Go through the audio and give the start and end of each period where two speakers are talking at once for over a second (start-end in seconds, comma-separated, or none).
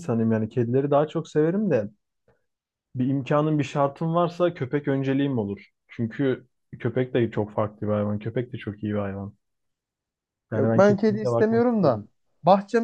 10.5-12.0